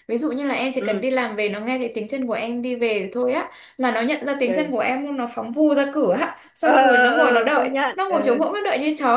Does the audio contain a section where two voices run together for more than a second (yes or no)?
yes